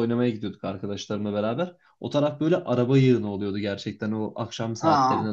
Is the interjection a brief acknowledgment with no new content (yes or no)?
yes